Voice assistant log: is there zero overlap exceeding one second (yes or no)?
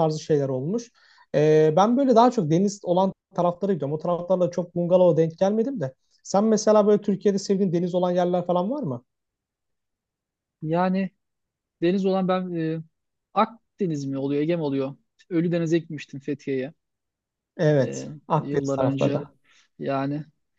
no